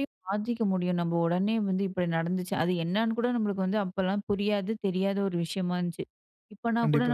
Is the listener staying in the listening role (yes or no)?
yes